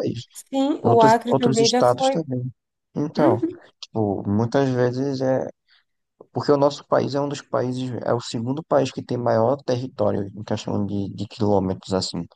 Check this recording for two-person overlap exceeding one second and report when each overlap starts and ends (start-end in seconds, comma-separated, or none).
0.8-2.2